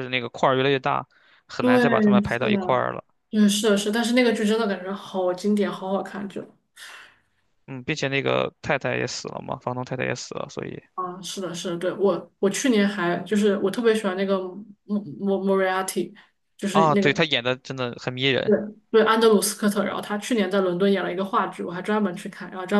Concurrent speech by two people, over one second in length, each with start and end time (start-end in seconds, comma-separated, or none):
1.6-2.8